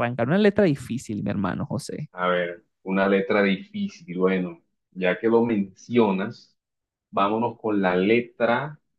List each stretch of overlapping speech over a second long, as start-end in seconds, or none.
none